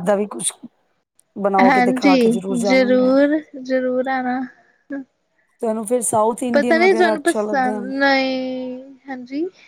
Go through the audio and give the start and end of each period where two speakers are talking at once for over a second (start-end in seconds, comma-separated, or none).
1.6-3.1, 6.5-7.8